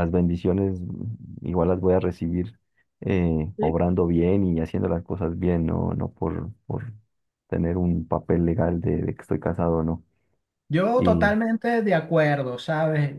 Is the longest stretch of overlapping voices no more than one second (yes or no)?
yes